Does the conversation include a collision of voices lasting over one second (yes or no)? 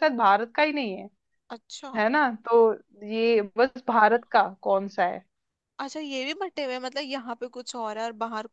no